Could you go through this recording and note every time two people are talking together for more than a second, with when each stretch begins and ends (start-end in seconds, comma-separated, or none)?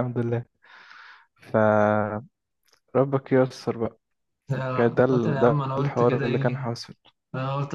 4.8-6.7